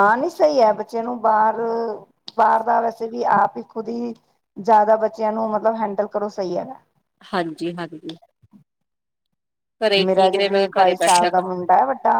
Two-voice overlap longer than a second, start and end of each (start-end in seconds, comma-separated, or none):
10.1-11.5